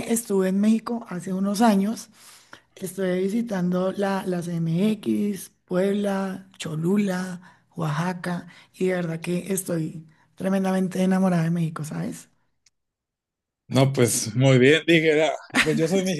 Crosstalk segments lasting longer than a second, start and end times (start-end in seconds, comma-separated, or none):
none